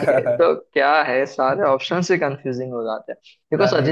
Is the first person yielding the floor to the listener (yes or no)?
no